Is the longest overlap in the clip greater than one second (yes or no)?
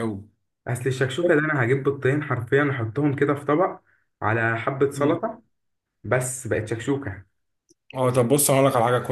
no